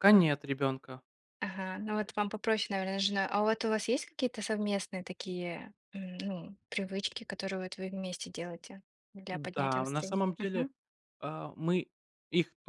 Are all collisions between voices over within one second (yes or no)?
no